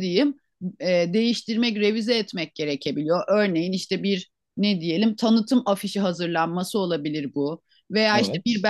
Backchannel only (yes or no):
yes